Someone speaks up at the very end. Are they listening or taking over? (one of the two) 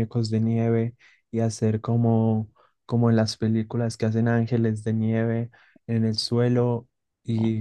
listening